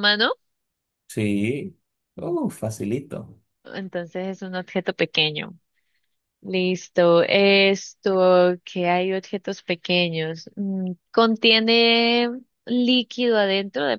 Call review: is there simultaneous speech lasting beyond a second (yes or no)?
no